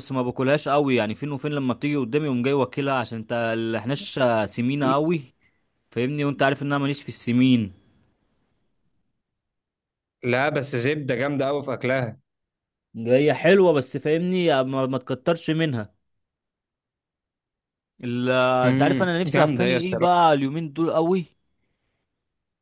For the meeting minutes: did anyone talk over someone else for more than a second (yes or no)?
yes